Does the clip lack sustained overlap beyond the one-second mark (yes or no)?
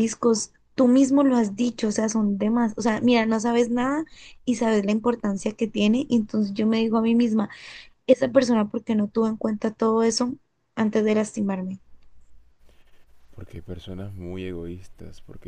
yes